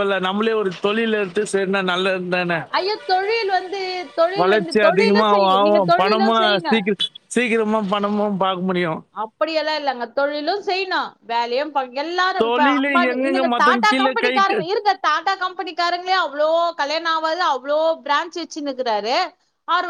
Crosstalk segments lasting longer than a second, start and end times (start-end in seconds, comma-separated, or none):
4.4-6.8, 12.4-14.6